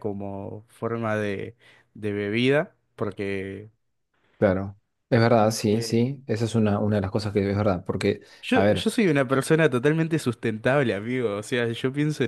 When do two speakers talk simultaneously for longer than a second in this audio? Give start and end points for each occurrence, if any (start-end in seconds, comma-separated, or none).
none